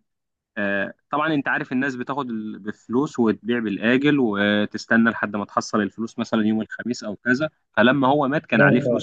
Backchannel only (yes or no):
yes